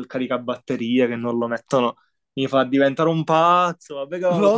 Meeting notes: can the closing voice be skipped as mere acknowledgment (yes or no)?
yes